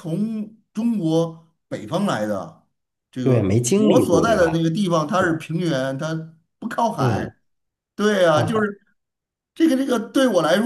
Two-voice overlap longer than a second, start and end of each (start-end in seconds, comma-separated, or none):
3.2-4.6